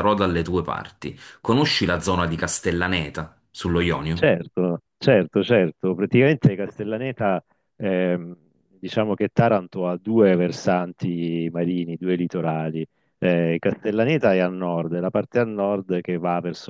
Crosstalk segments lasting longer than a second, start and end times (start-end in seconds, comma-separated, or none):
none